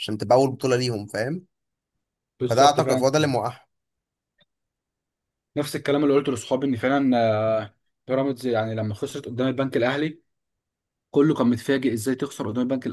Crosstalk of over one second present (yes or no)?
no